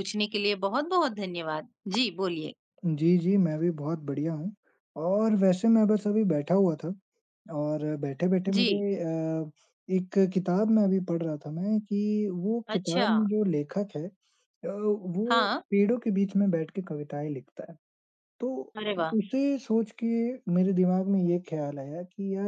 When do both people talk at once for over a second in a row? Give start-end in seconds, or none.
none